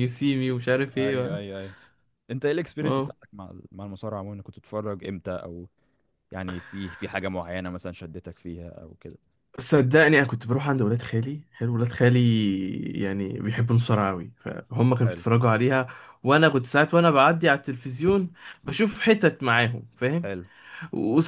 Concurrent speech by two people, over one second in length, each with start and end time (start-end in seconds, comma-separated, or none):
none